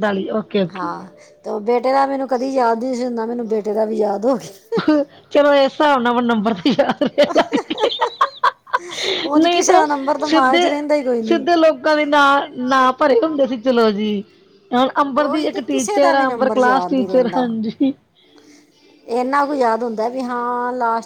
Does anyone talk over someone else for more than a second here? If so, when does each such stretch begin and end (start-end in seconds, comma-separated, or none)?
15.2-17.4